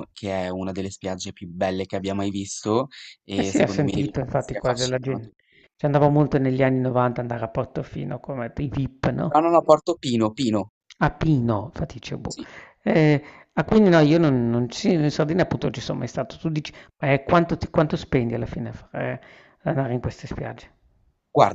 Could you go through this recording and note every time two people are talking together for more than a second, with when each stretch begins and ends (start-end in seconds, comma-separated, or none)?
3.3-5.3